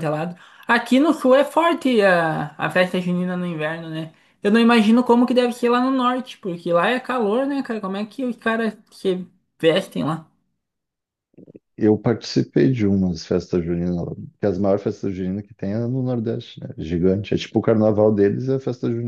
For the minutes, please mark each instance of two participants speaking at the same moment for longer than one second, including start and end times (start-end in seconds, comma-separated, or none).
none